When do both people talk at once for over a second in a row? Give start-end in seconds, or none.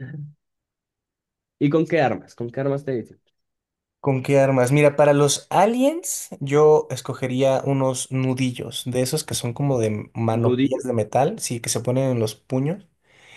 none